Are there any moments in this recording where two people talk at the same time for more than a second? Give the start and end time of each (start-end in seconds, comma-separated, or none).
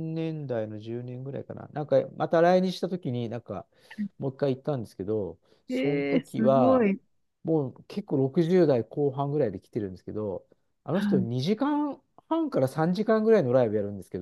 5.7-6.9